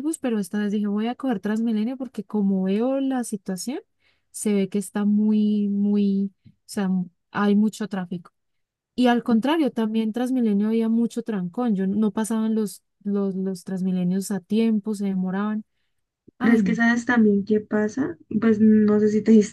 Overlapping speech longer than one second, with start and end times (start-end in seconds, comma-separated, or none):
none